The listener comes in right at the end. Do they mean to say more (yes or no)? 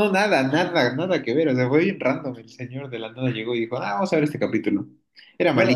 yes